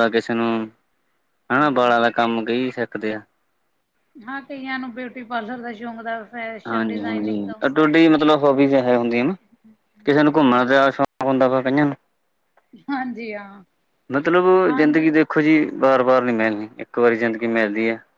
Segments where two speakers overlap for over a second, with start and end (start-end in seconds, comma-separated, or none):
6.7-8.0